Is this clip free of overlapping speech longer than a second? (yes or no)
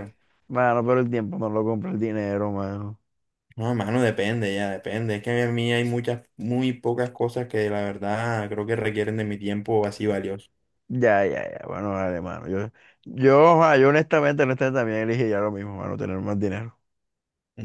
yes